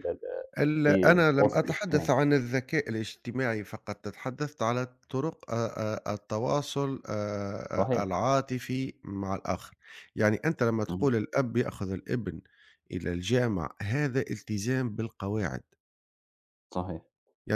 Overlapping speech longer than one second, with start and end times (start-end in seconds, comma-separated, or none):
0.9-2.1